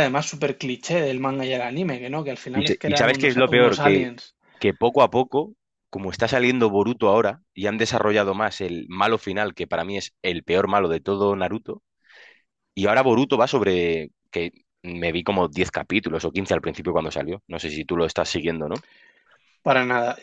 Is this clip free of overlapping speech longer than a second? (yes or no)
no